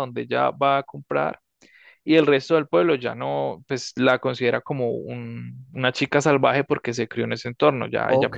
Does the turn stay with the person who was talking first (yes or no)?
no